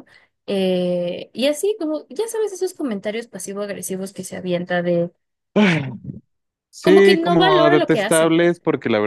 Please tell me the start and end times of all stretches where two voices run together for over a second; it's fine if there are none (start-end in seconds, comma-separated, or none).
6.8-8.4